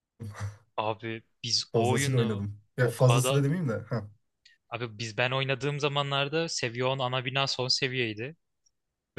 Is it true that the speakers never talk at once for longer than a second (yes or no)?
no